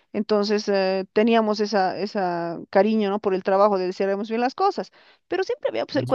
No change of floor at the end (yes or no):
yes